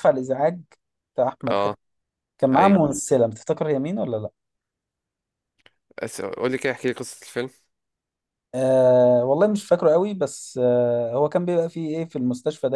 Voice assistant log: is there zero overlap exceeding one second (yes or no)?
yes